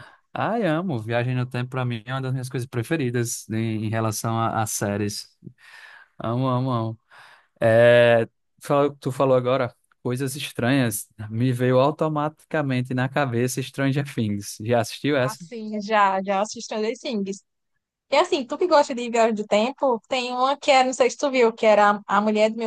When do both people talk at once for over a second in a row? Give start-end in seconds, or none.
none